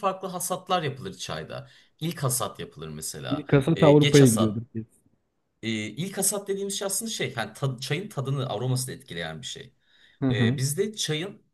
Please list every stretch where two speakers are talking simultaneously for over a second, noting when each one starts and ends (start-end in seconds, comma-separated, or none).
3.3-4.7